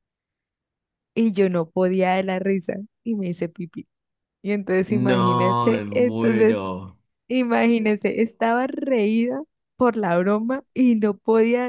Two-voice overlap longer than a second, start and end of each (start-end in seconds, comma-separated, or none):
5.0-6.7